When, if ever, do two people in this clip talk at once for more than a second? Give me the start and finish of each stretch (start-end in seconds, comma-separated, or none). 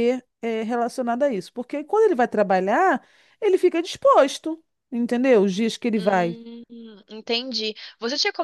none